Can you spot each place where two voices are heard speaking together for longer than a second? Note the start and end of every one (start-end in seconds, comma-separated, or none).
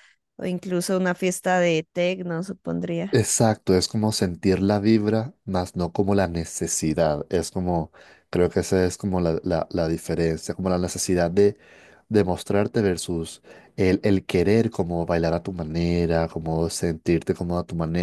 none